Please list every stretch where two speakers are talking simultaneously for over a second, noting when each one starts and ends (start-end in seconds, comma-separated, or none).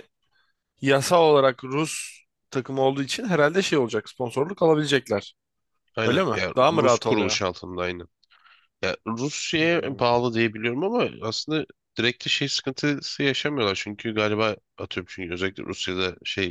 6.0-7.4